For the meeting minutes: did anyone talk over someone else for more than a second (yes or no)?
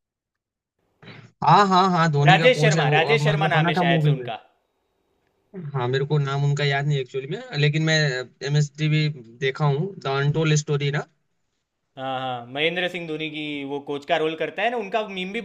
yes